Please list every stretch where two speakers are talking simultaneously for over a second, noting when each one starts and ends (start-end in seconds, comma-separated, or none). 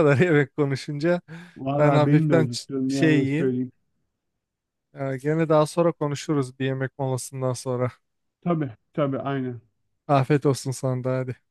1.8-3.5